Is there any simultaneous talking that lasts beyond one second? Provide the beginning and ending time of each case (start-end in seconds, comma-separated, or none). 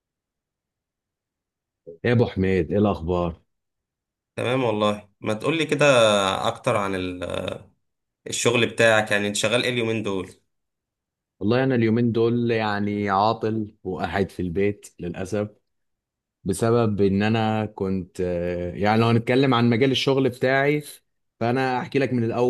none